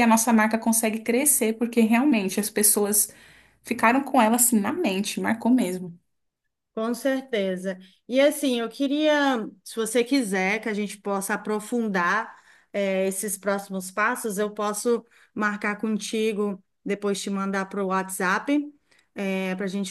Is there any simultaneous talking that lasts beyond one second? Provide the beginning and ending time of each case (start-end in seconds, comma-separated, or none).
none